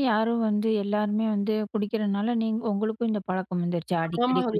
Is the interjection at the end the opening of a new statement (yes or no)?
yes